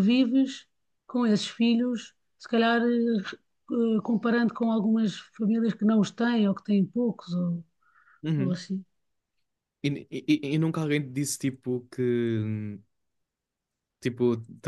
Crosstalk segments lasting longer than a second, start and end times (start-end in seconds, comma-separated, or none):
none